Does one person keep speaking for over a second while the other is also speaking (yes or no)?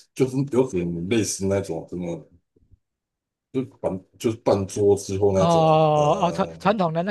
yes